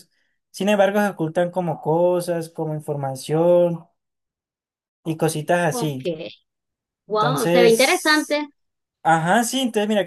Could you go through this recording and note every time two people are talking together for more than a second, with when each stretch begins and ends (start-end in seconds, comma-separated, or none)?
7.1-8.4